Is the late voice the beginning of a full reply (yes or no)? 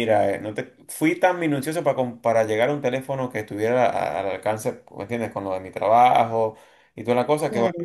no